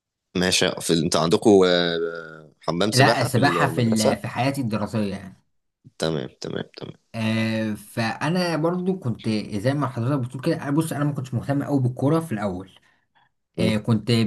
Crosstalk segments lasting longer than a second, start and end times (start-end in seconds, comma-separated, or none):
2.9-4.3